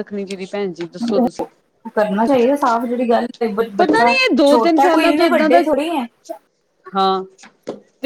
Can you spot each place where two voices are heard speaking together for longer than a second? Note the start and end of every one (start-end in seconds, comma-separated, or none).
3.8-5.6